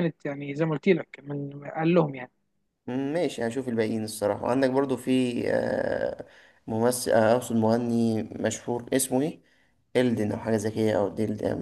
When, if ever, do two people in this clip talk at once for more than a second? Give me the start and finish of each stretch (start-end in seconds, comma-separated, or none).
none